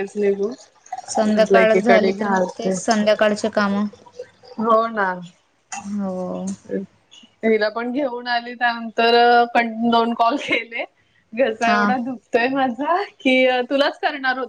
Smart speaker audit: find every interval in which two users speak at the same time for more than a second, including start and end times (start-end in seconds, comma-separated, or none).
none